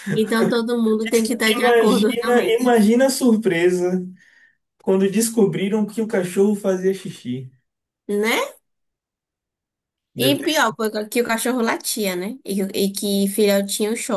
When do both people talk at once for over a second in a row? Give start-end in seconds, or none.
1.0-2.7